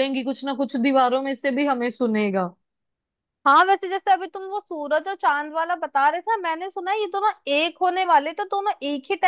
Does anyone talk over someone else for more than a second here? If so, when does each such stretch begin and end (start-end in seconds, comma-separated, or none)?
none